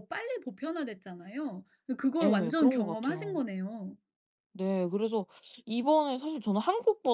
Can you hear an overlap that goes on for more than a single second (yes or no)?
yes